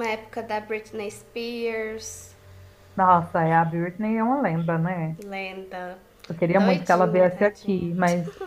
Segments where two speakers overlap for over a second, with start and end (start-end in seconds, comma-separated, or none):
6.6-7.8